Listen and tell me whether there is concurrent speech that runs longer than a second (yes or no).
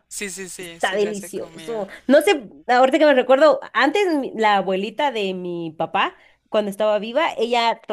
yes